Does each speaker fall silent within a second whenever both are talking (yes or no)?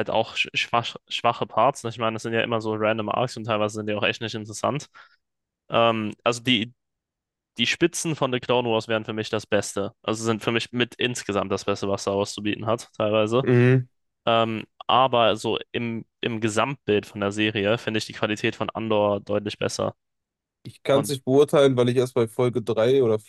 yes